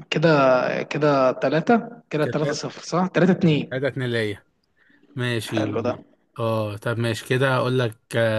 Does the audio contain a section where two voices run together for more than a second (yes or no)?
no